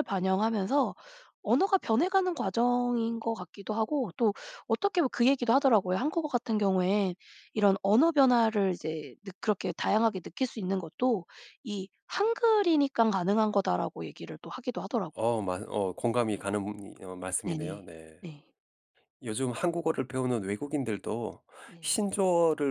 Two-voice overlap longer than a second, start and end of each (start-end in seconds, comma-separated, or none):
none